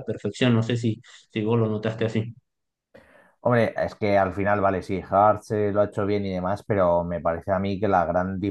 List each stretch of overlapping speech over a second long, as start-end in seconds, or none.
none